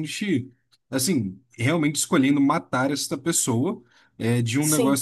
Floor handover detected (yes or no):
no